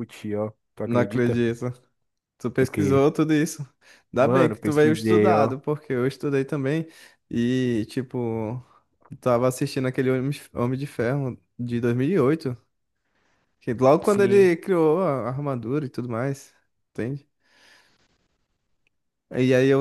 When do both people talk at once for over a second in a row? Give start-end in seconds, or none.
4.2-5.5